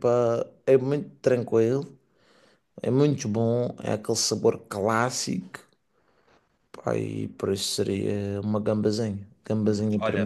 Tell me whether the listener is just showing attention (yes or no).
no